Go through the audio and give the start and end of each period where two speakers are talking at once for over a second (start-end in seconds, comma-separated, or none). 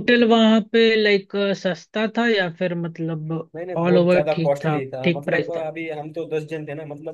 3.8-5.6